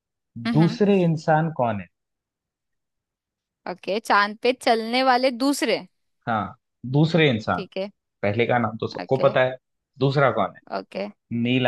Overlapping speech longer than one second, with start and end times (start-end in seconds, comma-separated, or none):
none